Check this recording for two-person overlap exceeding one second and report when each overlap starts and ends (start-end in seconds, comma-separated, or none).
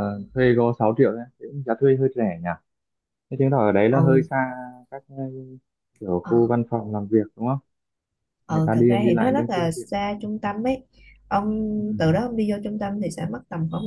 8.5-10.1